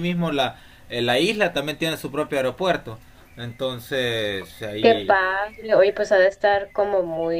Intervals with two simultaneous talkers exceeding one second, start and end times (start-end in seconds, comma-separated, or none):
none